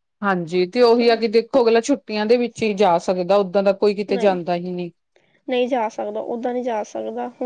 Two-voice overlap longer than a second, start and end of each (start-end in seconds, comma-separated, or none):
none